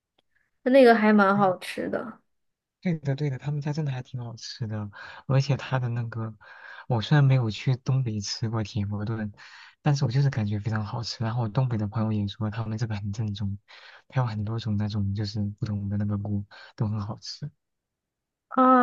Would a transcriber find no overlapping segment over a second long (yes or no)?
yes